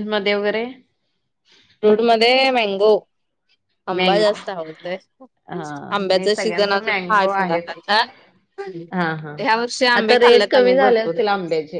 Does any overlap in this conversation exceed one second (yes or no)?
yes